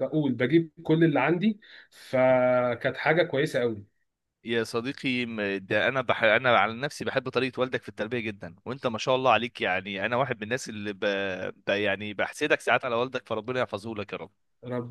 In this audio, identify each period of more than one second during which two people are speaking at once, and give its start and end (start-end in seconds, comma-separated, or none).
none